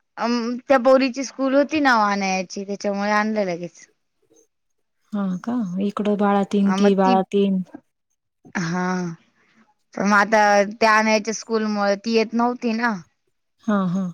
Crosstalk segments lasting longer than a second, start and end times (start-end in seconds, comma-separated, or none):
none